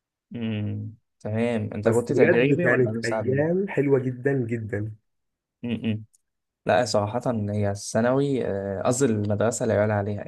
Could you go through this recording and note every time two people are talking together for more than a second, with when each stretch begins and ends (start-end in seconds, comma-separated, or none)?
1.8-3.4